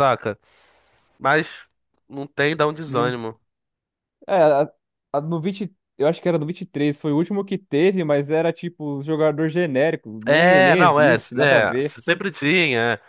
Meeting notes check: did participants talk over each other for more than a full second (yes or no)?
yes